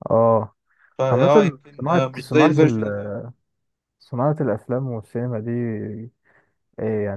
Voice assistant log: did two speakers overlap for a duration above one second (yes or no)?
yes